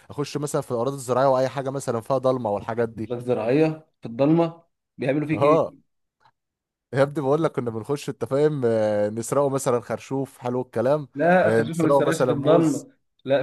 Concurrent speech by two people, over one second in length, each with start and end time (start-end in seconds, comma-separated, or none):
11.4-12.9